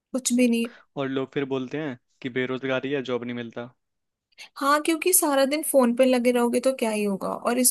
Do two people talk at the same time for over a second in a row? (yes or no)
no